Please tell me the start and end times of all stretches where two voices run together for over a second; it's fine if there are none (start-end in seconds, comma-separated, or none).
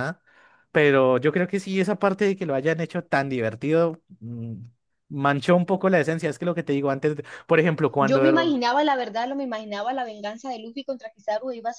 none